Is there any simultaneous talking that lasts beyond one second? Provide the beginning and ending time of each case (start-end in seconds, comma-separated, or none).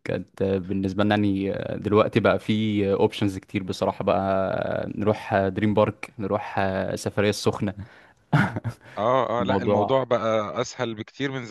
none